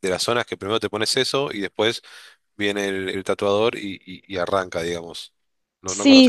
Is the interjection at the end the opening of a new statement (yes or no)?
yes